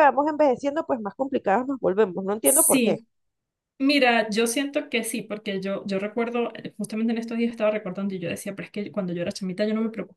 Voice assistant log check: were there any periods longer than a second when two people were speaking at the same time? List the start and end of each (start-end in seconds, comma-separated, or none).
none